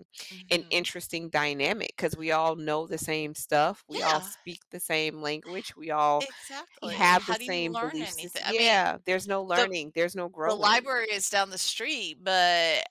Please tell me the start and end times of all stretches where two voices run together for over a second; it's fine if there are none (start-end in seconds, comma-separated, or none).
6.9-8.9